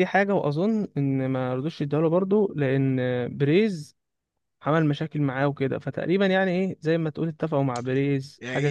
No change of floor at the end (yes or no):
no